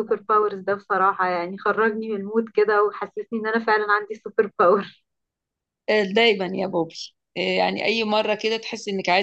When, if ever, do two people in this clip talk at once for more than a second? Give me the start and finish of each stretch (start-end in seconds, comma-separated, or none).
none